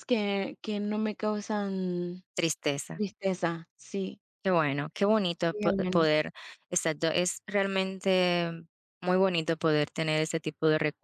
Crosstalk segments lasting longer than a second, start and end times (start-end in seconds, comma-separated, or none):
none